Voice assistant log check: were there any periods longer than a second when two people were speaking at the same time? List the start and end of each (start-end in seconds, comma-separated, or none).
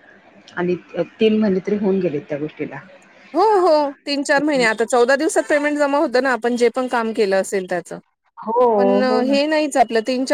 none